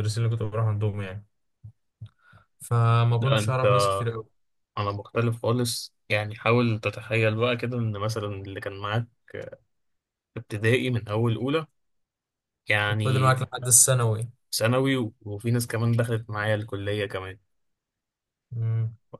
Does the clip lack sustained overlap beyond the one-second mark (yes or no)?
yes